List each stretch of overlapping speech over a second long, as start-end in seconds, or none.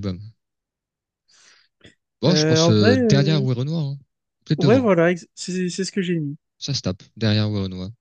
2.3-3.5